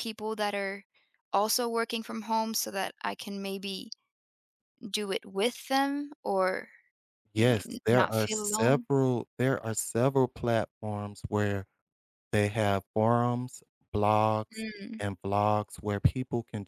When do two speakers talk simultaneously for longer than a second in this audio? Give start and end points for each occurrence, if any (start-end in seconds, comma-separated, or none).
7.3-8.9